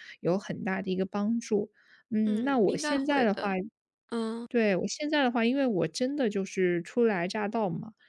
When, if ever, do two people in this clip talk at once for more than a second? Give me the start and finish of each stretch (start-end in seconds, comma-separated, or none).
2.2-3.5